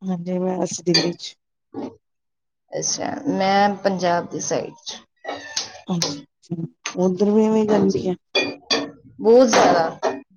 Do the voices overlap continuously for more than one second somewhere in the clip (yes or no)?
no